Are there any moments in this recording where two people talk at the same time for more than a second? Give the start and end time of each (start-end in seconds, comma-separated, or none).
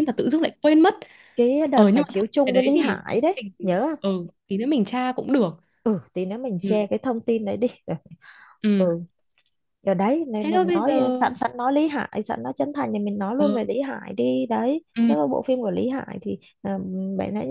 1.7-4.0